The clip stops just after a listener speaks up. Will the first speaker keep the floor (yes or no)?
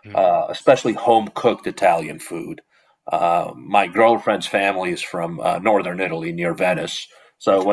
yes